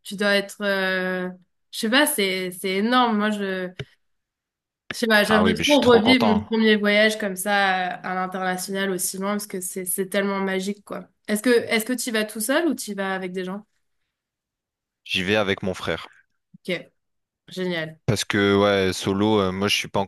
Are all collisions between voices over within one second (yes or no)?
no